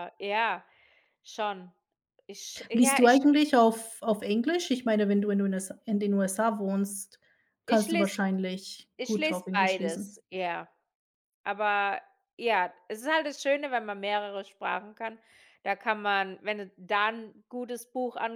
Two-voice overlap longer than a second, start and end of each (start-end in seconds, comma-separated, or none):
9.0-10.2